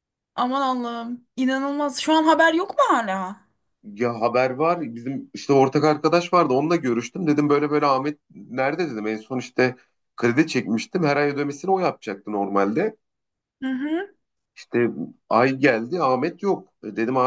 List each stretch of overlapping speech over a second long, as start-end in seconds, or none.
none